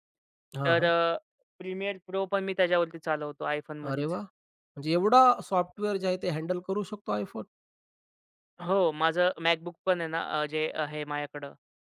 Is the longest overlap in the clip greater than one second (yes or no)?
no